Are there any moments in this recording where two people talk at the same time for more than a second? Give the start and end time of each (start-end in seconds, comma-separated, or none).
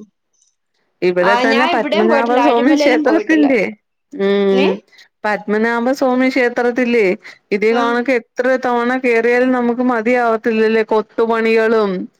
1.3-3.5